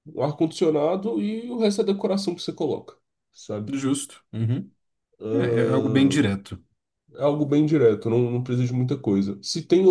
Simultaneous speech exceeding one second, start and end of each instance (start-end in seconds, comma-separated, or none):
none